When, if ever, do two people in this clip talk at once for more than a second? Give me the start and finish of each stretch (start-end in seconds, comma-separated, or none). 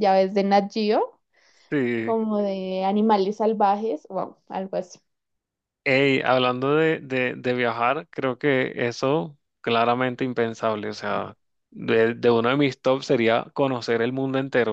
none